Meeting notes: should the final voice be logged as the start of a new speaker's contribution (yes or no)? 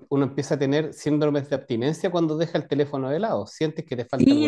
yes